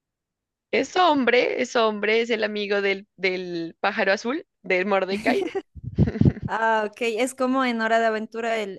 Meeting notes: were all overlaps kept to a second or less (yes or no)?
yes